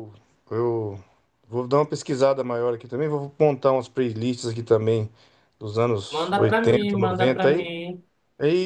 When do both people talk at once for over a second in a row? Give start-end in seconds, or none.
6.1-7.7